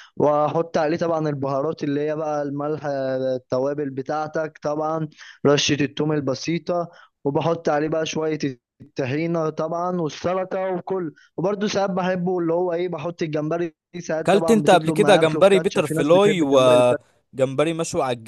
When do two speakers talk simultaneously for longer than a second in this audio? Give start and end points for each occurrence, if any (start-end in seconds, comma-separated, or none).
14.3-17.1